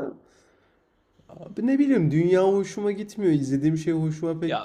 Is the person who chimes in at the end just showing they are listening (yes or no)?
no